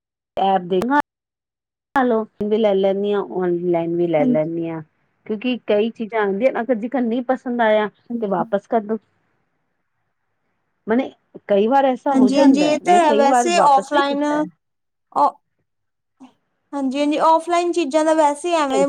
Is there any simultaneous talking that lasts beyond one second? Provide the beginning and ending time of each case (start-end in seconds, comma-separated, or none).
none